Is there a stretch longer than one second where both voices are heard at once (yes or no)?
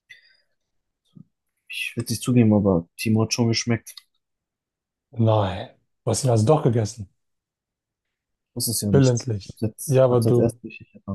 yes